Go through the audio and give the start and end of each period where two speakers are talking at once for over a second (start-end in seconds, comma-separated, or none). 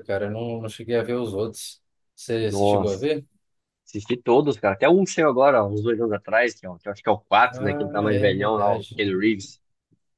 7.5-9.0